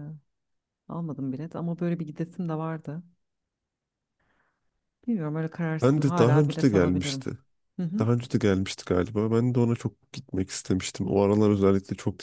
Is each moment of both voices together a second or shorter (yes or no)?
no